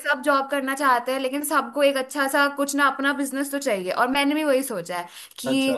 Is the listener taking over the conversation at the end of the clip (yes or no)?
no